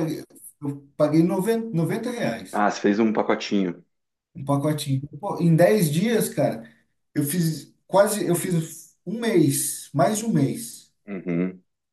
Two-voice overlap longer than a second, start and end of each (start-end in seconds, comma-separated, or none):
none